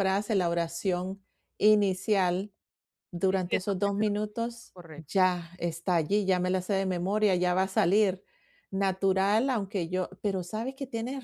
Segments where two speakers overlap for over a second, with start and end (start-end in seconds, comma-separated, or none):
3.2-5.2